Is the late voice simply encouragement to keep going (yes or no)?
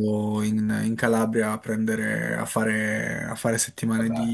yes